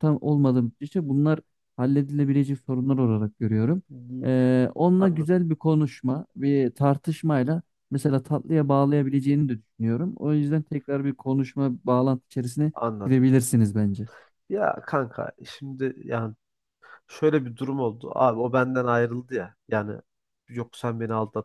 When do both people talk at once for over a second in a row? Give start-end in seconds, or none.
none